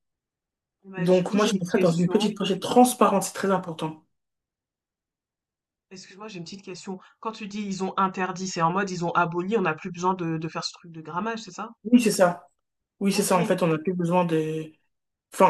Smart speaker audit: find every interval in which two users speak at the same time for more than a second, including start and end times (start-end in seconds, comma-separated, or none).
1.0-2.3